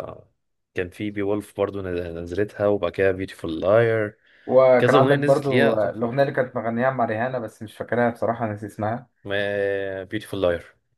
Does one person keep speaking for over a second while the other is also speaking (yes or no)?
yes